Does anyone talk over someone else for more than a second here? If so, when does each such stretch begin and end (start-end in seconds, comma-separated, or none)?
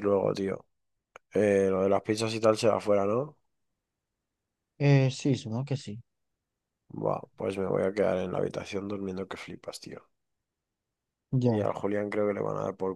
none